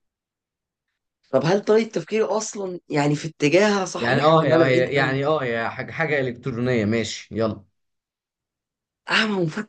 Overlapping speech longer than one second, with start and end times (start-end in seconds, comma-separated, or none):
4.0-5.2